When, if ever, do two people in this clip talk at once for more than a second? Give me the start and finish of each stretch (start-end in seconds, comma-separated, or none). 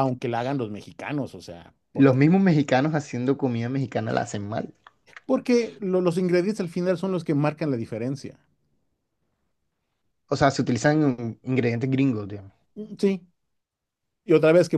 none